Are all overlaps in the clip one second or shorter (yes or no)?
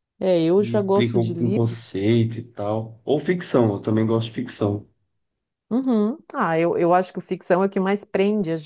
no